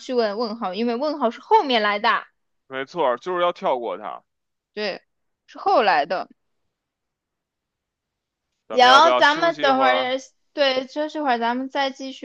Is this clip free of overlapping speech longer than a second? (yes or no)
no